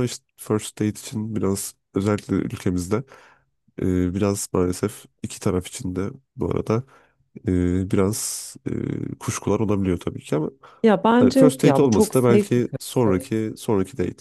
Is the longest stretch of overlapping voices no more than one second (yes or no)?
no